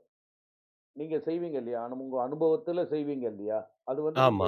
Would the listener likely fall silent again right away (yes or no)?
yes